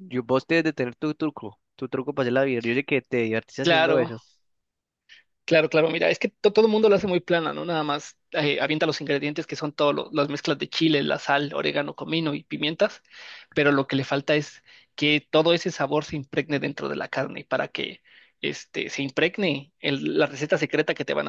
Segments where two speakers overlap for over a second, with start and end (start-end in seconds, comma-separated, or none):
none